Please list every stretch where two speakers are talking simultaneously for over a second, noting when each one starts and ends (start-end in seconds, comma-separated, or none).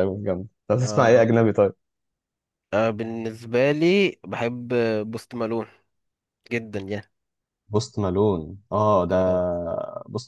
none